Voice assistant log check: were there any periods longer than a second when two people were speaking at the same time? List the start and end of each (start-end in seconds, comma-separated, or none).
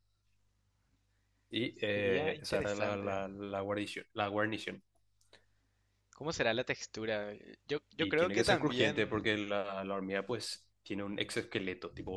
1.9-3.1, 8.0-9.3